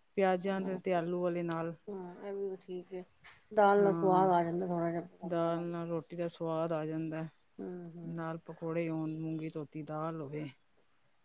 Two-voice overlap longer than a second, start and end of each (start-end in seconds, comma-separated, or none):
none